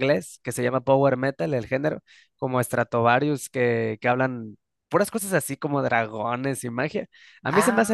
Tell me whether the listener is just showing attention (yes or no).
yes